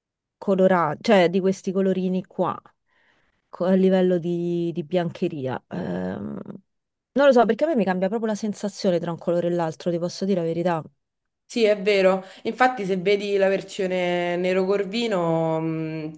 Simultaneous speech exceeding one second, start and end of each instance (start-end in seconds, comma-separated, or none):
none